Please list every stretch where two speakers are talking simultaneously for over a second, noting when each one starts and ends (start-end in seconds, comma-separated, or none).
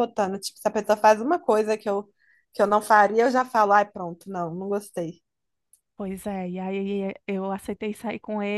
none